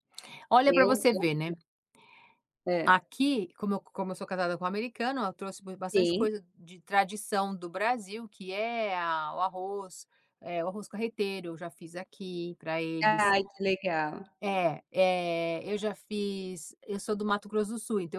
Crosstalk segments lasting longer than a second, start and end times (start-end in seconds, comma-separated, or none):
none